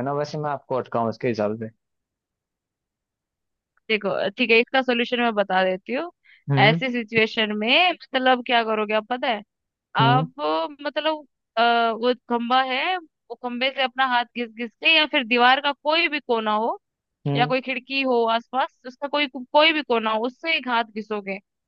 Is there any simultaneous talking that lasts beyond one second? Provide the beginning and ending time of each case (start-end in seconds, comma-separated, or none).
none